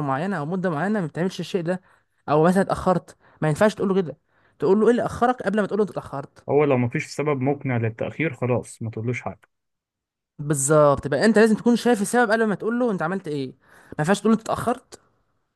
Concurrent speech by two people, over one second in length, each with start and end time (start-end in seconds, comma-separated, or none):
none